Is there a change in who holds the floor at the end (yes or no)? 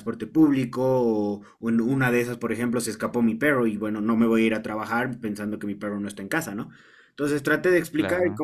no